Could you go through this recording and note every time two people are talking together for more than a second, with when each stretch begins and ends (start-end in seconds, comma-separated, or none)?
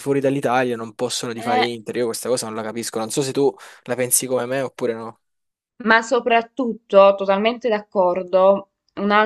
none